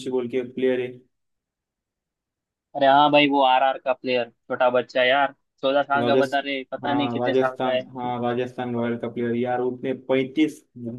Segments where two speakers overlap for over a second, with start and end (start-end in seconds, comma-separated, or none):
6.0-7.8